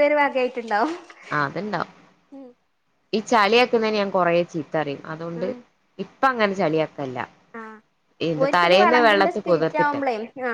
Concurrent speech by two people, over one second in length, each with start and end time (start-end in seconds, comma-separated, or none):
8.4-9.9